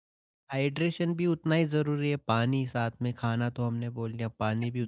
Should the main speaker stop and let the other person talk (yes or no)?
yes